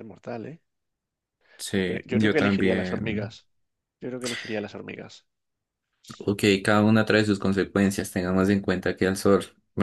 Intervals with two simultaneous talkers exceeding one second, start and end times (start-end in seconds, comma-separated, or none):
1.7-3.4